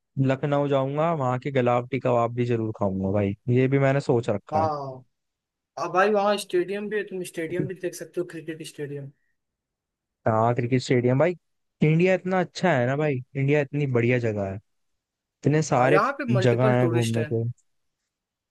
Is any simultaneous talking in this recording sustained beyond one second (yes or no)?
yes